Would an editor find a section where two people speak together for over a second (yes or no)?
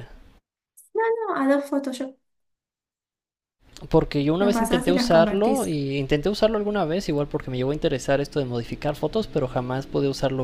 yes